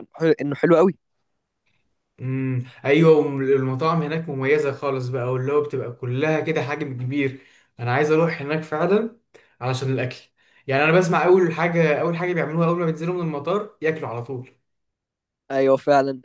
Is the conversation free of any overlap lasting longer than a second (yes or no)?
yes